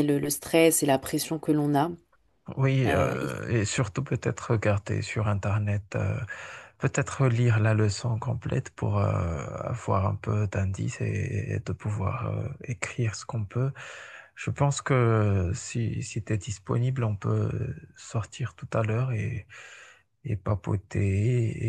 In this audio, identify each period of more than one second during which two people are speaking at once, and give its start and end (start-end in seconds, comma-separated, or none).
none